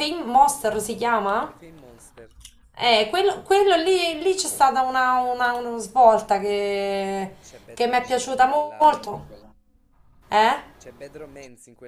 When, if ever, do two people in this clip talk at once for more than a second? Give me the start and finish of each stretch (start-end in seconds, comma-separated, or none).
7.7-9.2